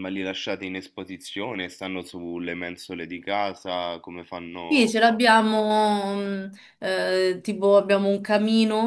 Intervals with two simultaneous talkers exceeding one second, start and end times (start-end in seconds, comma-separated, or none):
none